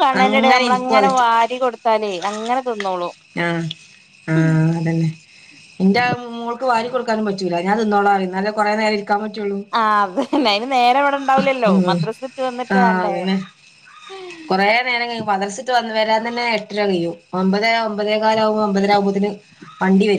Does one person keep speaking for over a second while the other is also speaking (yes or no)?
no